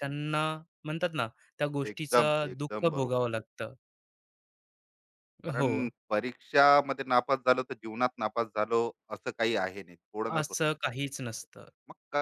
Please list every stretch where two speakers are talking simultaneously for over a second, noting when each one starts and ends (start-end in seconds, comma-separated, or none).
1.9-3.4